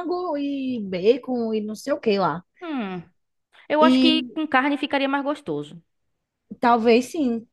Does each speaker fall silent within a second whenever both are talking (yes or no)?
yes